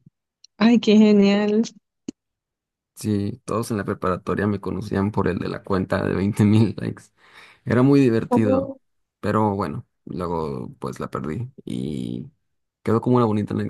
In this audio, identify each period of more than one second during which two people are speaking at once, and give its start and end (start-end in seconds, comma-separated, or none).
none